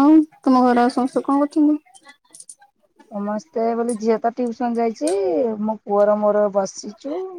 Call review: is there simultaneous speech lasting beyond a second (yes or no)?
no